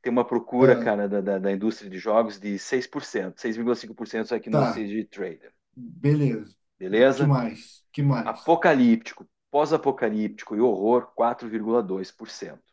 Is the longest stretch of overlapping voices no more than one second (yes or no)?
yes